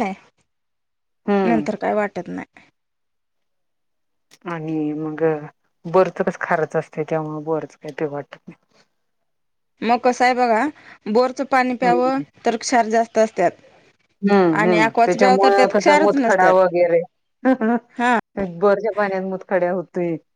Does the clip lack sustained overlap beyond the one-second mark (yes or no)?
no